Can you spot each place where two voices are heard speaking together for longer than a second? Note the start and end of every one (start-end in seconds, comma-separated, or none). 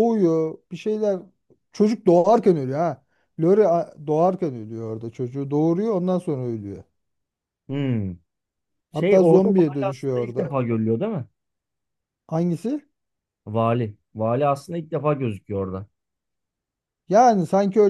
8.9-10.5